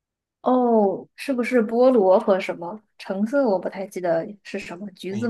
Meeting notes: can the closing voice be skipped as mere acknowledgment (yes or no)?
no